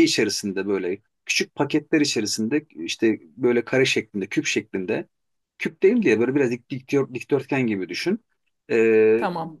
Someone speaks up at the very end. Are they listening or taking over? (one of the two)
listening